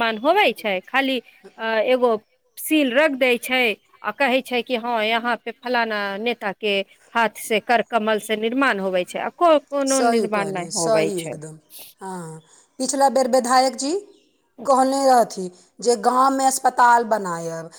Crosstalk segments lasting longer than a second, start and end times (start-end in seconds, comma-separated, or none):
9.9-11.4